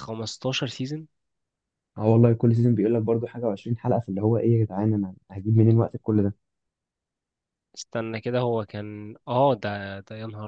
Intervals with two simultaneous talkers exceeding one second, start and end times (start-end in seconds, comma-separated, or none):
none